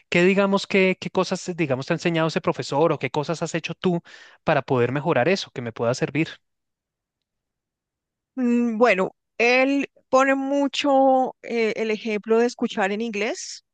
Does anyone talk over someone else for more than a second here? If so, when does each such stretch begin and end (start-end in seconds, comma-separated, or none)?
none